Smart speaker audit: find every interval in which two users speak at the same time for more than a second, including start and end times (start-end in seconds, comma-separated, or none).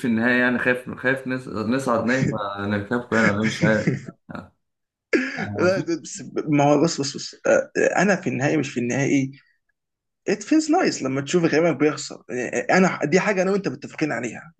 none